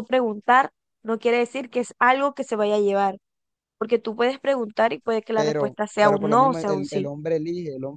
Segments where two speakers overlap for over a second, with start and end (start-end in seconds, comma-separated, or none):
5.3-7.1